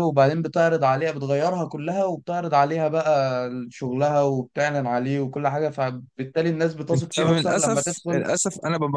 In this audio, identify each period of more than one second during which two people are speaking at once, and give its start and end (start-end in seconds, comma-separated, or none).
6.9-8.3